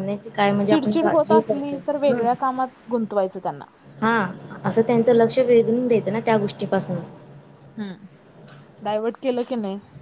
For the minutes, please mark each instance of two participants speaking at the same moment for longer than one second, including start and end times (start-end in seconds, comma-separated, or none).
0.7-2.2